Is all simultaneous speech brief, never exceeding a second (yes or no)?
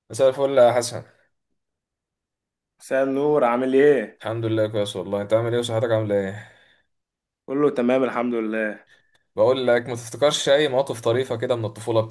yes